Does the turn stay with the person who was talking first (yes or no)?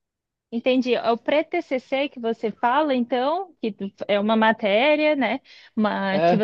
yes